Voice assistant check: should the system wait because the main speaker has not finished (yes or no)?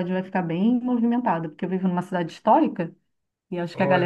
yes